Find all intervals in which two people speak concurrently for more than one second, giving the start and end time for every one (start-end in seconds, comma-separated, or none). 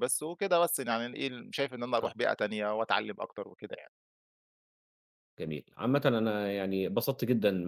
none